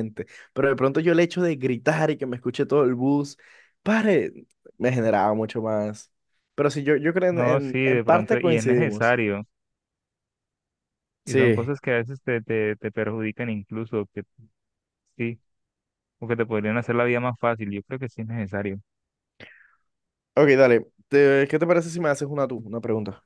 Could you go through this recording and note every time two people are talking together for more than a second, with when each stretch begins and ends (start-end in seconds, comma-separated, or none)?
7.3-9.2